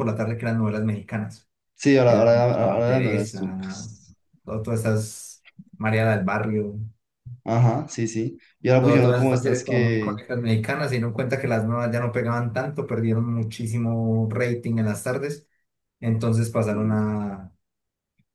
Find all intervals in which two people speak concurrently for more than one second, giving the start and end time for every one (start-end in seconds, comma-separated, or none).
2.1-3.9, 8.8-10.2